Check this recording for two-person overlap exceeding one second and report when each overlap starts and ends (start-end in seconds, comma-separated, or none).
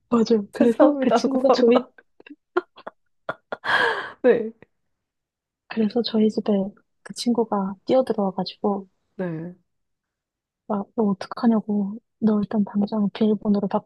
0.5-1.9